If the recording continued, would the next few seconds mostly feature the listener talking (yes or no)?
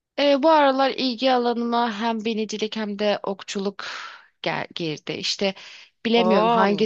no